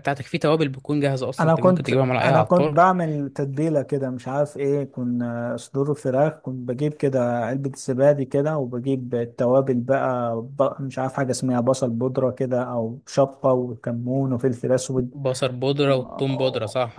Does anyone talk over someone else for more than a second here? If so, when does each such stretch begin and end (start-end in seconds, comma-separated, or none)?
1.4-2.9